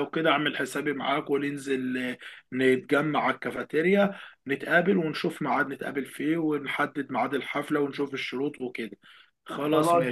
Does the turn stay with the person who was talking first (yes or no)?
no